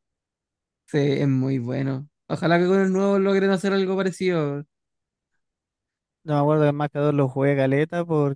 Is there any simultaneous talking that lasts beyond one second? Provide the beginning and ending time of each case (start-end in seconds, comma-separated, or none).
none